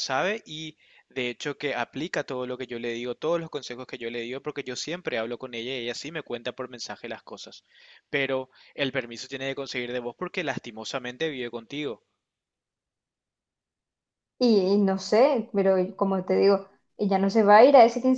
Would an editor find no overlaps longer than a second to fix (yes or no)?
yes